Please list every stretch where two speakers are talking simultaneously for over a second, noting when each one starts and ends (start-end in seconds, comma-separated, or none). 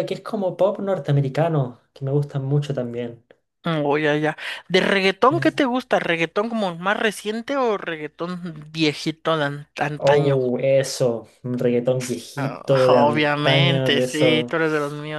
12.4-14.6